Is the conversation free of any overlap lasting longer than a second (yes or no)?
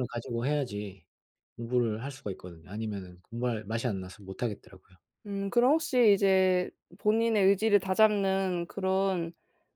yes